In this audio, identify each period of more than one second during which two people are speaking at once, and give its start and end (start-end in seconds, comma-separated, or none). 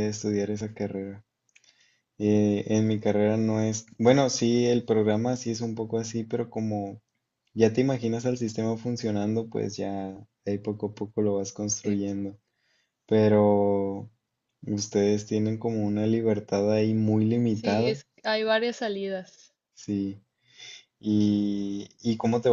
none